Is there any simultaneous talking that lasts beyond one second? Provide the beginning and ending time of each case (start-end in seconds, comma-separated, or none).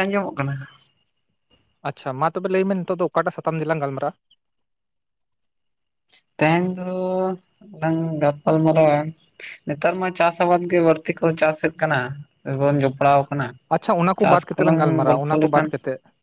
13.8-15.7